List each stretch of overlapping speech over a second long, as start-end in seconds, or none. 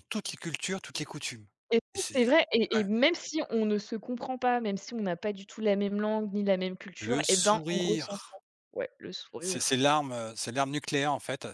7.0-8.4